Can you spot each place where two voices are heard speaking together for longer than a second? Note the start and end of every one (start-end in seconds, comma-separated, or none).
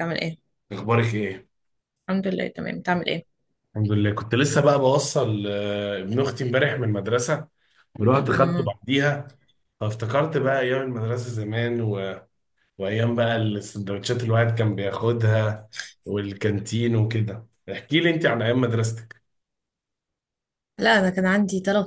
none